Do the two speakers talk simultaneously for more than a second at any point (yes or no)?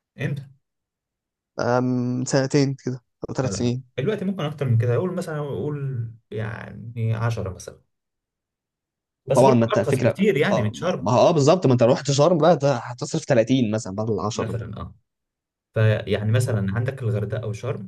yes